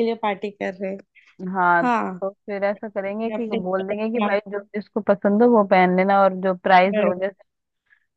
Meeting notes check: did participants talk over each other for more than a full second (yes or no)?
yes